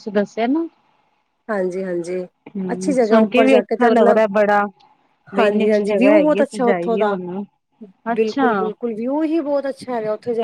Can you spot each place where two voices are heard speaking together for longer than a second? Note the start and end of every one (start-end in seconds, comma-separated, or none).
2.7-4.2, 5.4-7.2